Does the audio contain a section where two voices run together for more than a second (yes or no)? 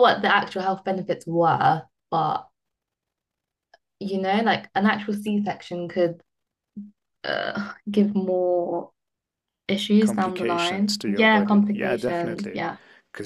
yes